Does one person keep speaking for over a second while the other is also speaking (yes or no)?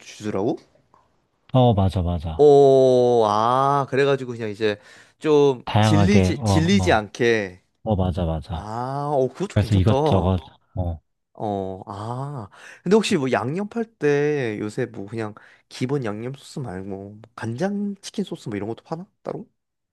yes